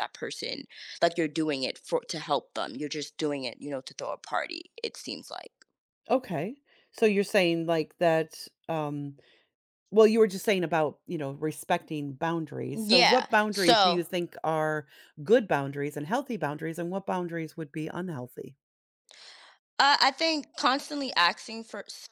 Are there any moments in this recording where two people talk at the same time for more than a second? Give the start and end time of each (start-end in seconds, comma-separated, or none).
12.7-14.0